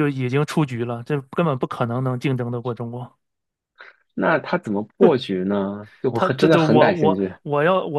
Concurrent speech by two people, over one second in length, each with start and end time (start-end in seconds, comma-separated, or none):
6.1-7.3